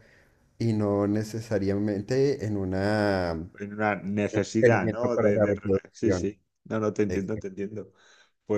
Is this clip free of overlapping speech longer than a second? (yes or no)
no